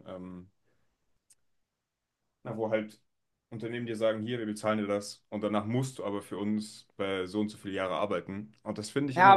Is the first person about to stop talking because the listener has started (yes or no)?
yes